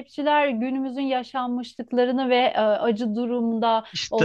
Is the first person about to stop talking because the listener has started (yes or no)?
no